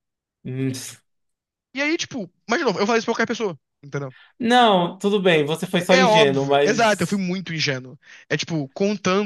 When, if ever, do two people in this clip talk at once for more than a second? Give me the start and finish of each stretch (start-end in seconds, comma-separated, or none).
5.9-7.2